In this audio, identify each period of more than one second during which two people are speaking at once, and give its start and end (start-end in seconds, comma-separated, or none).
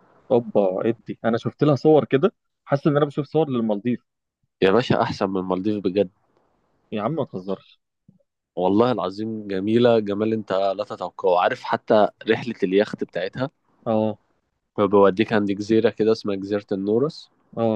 none